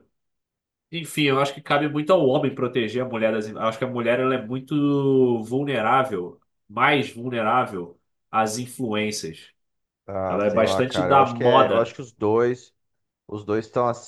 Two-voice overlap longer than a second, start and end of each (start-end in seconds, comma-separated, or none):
10.3-12.0